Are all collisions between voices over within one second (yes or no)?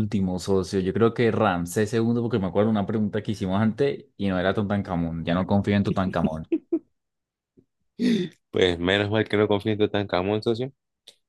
yes